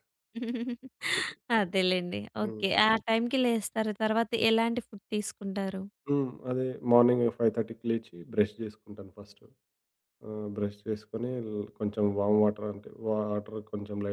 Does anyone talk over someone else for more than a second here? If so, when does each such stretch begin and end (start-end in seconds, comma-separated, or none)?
none